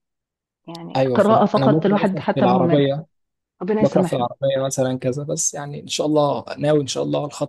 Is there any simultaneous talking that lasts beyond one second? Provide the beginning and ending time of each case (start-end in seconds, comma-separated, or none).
1.0-2.8